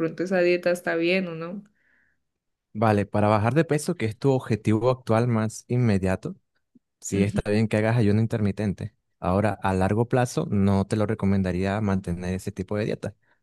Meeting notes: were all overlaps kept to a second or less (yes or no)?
yes